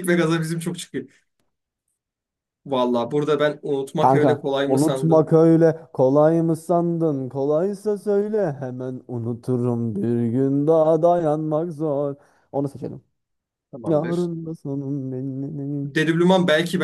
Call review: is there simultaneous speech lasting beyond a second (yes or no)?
yes